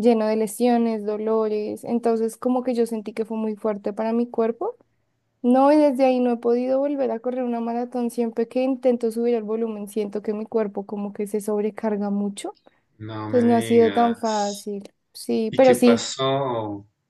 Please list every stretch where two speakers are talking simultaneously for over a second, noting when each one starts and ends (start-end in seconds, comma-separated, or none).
13.3-14.7